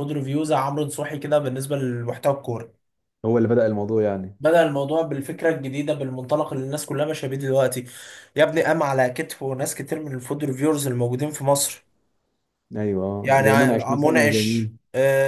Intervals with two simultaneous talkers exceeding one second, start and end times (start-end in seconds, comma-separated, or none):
13.2-14.8